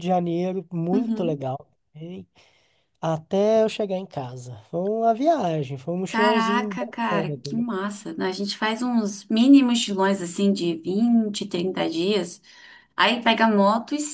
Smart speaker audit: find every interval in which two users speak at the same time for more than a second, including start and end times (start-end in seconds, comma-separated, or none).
6.1-7.7